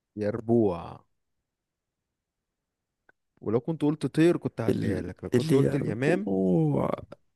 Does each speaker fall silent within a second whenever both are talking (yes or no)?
no